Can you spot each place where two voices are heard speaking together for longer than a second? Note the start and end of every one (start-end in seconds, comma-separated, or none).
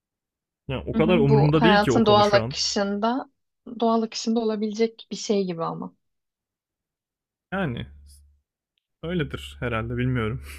0.9-2.6